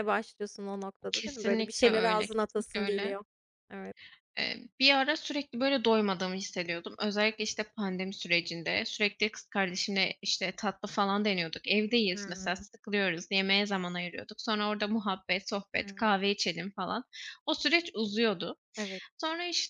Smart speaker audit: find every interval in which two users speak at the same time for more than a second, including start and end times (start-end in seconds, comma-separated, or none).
1.1-3.2